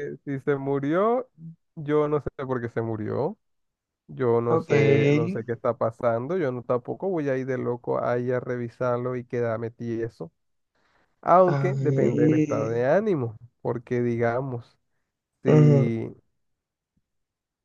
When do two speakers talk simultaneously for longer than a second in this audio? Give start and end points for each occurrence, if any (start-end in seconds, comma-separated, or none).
11.5-12.8